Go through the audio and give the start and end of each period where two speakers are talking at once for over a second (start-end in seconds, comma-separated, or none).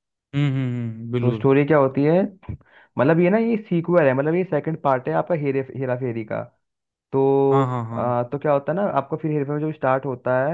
none